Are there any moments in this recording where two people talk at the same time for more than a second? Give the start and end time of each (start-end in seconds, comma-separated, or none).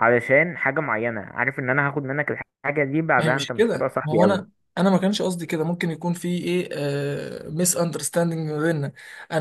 3.2-4.6